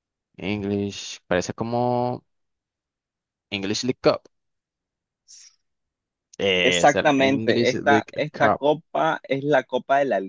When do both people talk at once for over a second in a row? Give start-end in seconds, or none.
6.6-8.6